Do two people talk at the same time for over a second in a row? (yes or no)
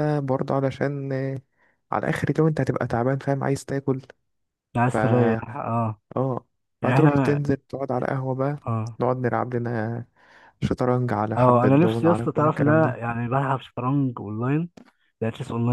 yes